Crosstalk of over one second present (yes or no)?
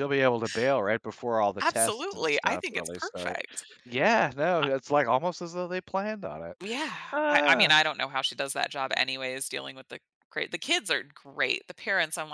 yes